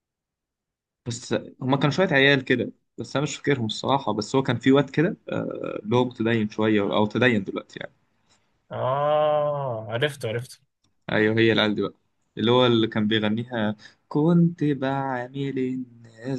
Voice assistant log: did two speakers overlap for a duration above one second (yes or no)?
no